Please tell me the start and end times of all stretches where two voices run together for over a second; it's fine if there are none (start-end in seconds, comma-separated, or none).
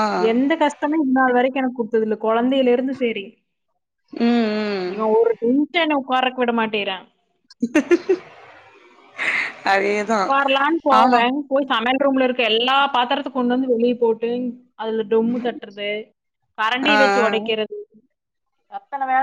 none